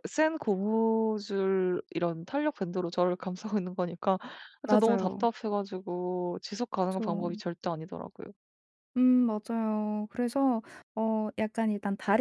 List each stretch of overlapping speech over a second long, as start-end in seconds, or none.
none